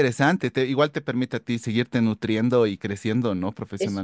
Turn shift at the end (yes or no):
yes